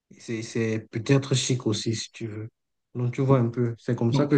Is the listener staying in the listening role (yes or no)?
yes